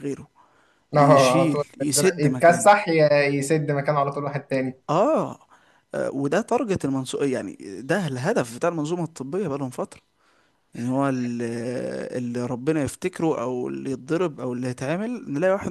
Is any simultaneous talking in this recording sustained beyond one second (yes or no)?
yes